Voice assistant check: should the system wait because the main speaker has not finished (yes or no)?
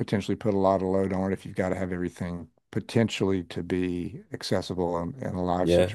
no